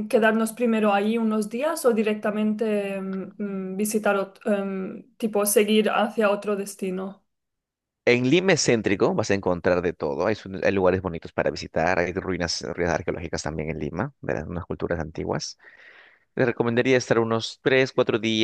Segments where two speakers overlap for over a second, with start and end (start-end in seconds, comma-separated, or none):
none